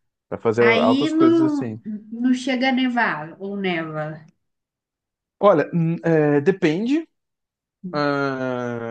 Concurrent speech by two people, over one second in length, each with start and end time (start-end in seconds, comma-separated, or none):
0.6-1.8